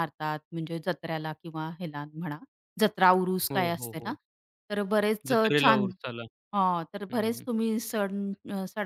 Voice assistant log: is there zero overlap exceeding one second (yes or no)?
yes